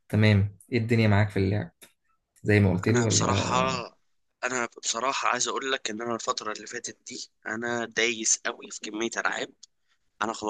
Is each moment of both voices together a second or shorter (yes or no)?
yes